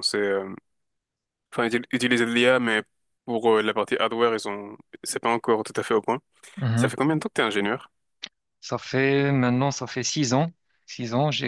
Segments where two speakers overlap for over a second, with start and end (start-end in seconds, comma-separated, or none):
none